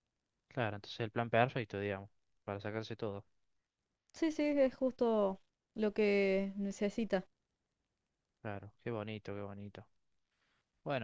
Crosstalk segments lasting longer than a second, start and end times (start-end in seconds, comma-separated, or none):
none